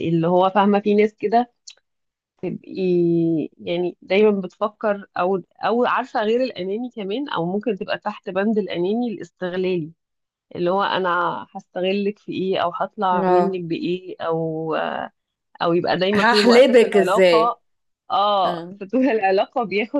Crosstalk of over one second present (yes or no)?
yes